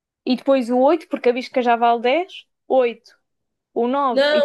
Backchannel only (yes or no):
no